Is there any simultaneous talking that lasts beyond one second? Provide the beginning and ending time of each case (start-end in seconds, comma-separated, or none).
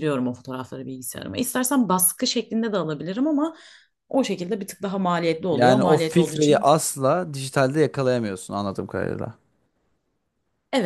5.5-6.7